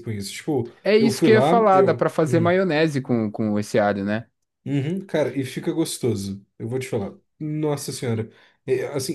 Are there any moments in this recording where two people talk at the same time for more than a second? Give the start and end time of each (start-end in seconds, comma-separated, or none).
0.8-2.5